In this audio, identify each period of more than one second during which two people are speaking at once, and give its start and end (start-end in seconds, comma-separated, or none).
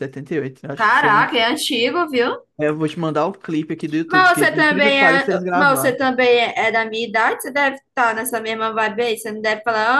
4.1-6.0